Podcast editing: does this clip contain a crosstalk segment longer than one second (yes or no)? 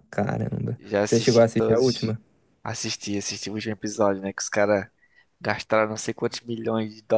yes